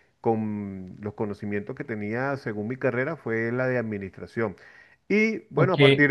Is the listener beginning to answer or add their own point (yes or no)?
no